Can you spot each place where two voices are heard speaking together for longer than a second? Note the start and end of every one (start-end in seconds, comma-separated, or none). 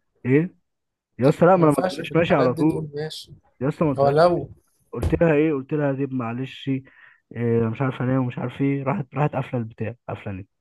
1.6-2.8